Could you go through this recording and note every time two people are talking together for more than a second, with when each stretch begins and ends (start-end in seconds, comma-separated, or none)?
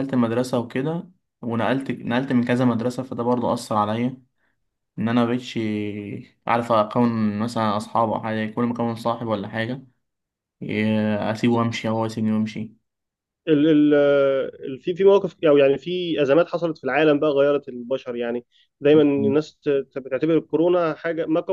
none